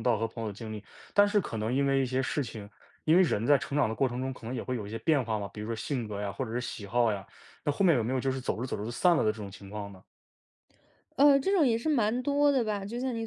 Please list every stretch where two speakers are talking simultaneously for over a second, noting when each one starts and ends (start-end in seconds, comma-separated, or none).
none